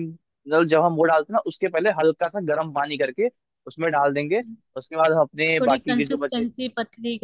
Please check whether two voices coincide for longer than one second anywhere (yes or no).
yes